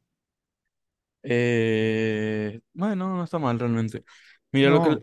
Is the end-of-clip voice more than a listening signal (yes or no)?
no